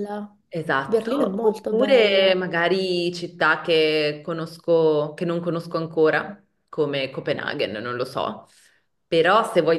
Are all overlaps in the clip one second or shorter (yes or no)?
no